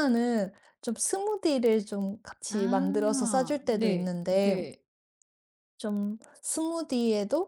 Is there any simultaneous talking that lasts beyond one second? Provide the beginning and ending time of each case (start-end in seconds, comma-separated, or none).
2.5-4.6